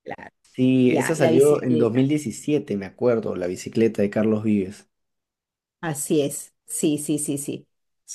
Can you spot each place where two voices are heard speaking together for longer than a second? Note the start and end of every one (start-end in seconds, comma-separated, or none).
0.8-2.1